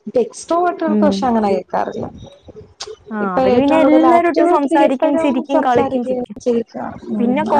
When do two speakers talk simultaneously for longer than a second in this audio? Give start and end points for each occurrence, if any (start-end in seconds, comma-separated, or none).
3.2-6.4